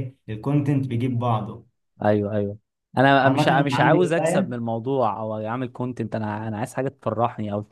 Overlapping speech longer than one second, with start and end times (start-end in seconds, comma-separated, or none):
3.2-4.5